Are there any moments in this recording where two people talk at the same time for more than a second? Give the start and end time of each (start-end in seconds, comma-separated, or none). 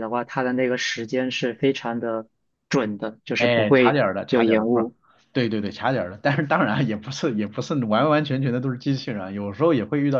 3.4-4.9